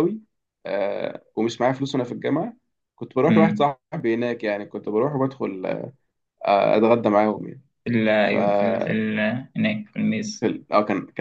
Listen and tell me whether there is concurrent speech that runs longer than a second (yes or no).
no